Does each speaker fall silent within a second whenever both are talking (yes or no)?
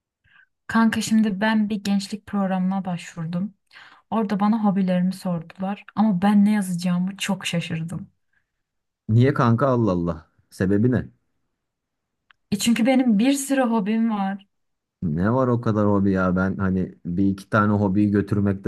yes